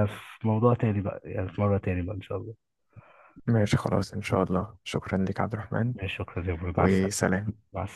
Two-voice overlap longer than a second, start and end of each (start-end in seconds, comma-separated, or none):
none